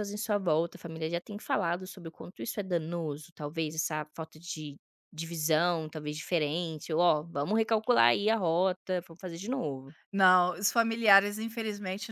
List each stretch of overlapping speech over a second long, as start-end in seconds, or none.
none